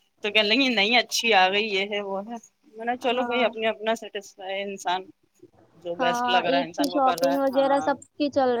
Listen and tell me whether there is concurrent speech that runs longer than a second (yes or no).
yes